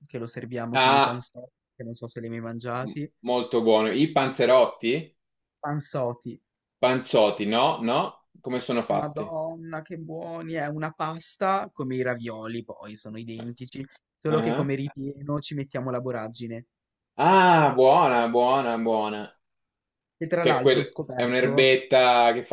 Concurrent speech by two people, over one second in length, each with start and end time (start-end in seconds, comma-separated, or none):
20.4-21.7